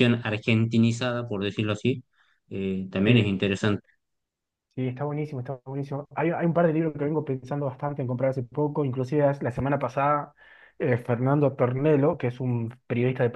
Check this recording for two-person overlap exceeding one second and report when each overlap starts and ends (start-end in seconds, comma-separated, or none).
none